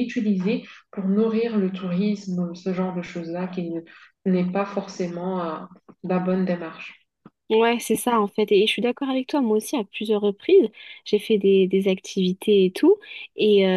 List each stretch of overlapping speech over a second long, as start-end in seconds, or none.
none